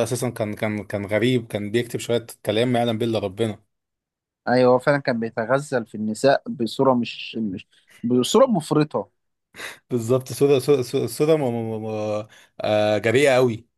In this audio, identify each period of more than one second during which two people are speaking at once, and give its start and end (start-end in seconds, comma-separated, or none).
none